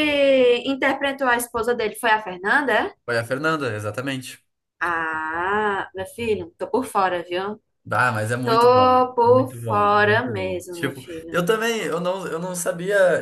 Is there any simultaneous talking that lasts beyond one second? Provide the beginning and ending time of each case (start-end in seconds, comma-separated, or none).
8.4-11.4